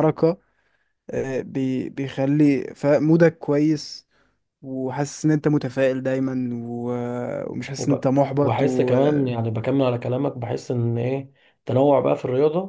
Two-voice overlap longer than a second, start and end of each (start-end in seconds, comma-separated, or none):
7.8-9.3